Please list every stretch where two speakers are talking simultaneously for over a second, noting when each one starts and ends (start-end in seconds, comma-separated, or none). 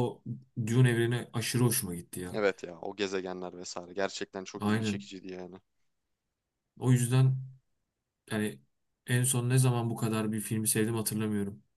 none